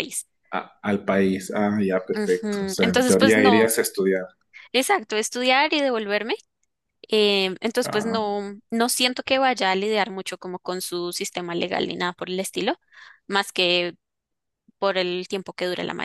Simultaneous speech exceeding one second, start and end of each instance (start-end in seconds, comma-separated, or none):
2.1-3.7